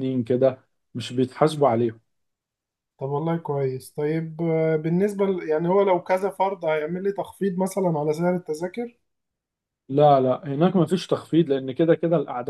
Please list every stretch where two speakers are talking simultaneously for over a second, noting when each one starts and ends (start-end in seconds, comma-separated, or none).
none